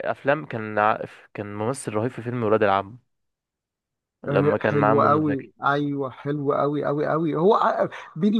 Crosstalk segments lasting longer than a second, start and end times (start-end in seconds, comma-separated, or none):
4.3-5.5